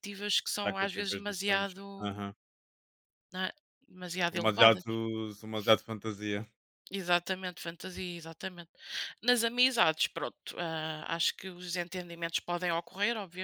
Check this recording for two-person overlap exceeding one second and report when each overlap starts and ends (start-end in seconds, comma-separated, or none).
0.6-2.2